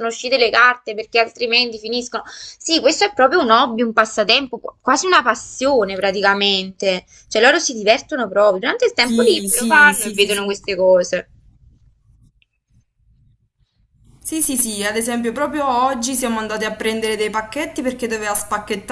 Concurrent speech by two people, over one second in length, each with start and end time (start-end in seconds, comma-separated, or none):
9.0-10.6